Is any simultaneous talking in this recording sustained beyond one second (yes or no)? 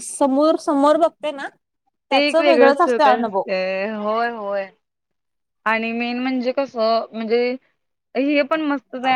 yes